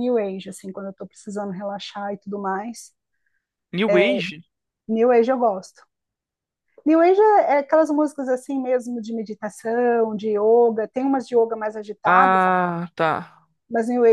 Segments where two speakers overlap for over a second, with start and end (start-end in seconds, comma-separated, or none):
none